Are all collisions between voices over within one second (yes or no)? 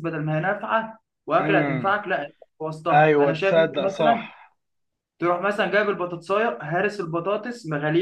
no